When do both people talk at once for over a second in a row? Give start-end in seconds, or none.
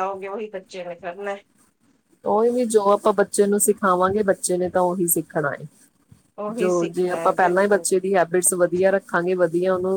6.6-8.1